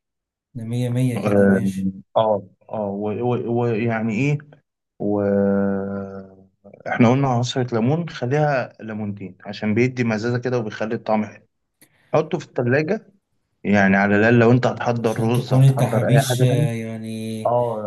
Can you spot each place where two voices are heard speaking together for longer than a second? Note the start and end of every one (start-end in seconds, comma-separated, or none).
15.0-16.7